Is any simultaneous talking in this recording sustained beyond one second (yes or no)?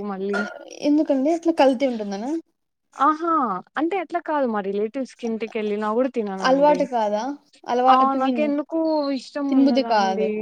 no